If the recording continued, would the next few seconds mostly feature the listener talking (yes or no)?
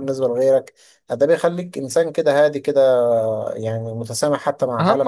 yes